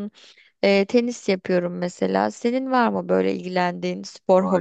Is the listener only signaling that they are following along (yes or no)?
no